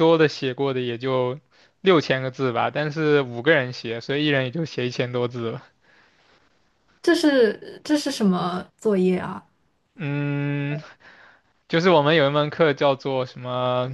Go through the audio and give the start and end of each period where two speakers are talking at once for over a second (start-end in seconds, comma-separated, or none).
none